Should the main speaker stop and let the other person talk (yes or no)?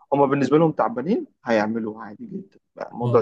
no